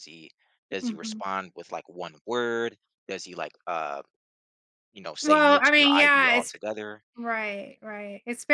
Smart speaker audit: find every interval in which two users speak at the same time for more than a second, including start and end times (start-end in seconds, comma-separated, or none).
5.2-6.5